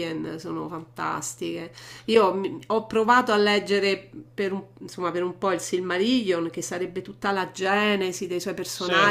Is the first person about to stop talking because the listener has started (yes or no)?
no